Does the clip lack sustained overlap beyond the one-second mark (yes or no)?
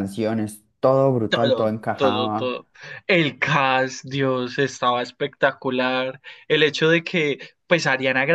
no